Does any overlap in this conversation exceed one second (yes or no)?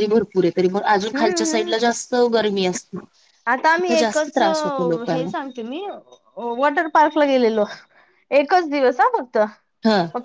no